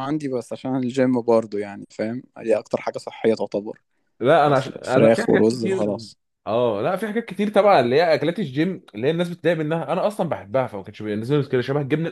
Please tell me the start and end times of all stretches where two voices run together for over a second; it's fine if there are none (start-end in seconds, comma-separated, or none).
4.5-5.9